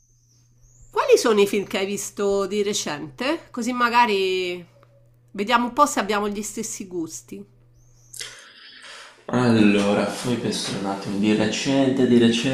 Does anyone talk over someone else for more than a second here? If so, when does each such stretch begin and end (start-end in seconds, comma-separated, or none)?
none